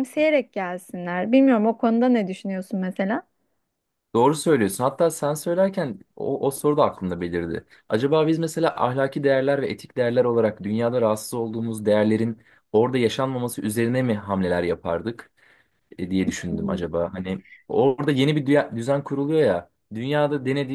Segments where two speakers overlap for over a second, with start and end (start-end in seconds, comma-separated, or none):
none